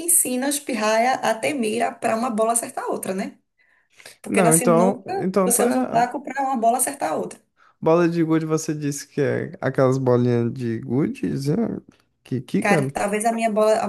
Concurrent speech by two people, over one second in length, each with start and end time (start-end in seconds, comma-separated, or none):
4.3-5.8